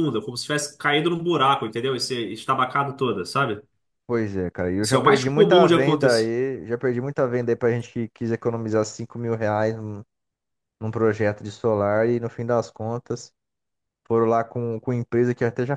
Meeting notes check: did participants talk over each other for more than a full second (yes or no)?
yes